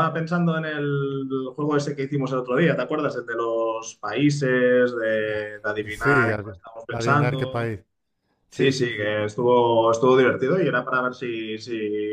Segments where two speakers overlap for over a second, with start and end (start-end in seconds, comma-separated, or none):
5.9-7.8